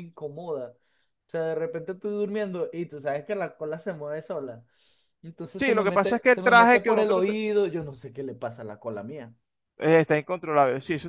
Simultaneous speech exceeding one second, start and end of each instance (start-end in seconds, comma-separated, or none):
5.6-7.2